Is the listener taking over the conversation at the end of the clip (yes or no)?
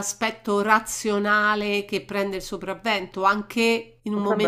no